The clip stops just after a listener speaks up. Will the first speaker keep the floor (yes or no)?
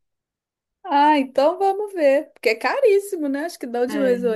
yes